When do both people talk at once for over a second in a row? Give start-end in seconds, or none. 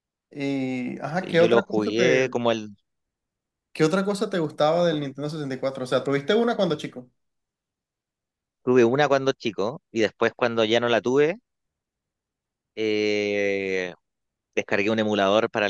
1.0-2.4